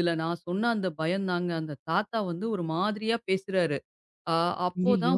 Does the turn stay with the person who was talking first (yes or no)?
yes